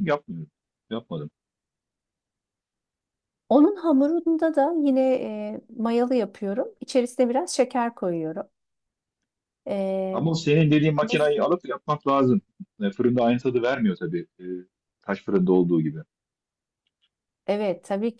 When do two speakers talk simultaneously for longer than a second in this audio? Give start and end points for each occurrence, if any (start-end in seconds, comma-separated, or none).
none